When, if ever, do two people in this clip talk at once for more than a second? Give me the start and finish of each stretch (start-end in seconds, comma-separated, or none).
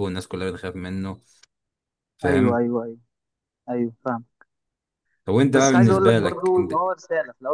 5.5-6.7